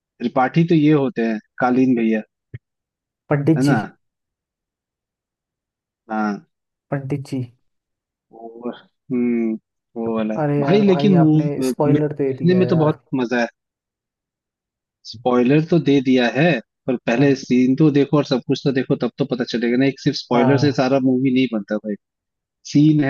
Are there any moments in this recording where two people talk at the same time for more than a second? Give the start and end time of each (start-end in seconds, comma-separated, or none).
10.4-13.0